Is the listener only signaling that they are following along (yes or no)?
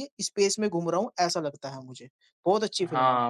no